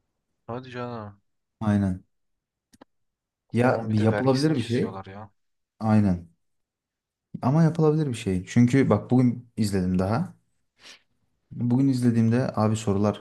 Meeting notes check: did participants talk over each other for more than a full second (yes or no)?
yes